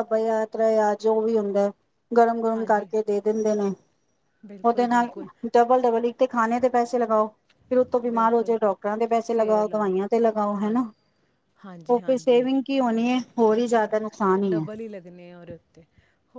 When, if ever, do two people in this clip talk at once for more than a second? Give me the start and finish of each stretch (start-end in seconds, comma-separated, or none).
none